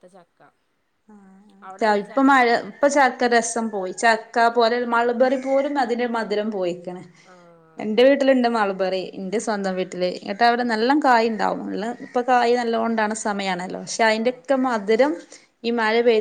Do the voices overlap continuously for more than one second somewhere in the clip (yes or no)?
no